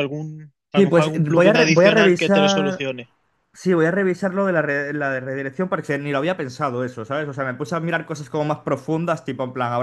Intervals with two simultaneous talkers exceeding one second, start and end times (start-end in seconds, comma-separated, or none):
0.7-2.8